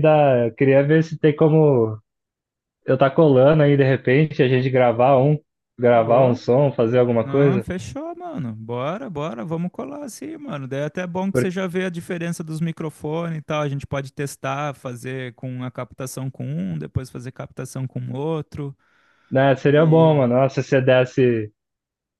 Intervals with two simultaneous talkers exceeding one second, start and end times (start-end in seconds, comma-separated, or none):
none